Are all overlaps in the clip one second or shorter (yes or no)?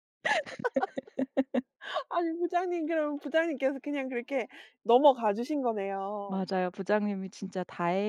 yes